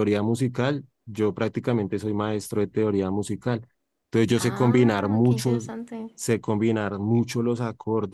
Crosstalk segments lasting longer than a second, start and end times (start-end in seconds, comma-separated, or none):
4.3-5.7